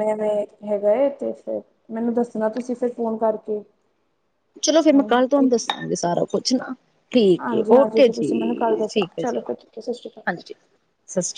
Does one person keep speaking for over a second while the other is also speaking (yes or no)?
yes